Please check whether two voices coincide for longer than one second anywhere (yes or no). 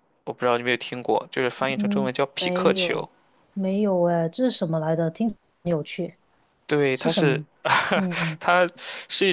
yes